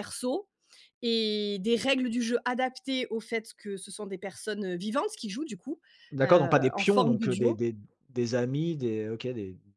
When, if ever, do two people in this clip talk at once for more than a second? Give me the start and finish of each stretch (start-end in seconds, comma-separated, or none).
6.2-7.6